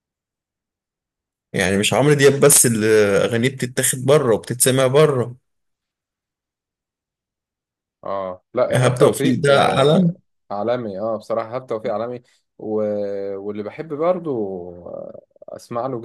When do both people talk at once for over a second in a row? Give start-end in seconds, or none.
8.7-10.2